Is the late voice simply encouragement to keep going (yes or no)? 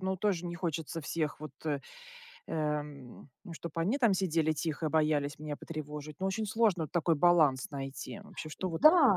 no